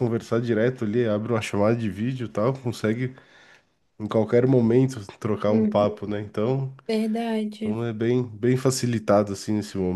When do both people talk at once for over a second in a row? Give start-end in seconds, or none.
none